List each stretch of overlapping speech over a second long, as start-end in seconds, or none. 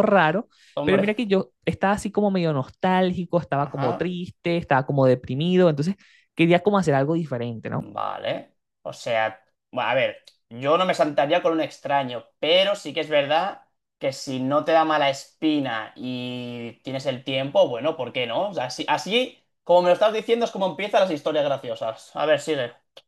none